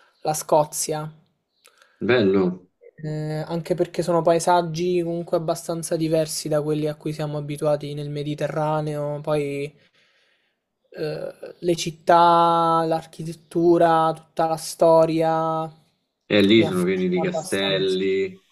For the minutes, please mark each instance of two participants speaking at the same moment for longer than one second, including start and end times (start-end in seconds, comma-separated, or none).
16.5-18.0